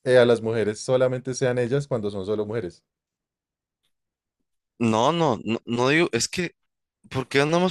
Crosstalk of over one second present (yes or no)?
no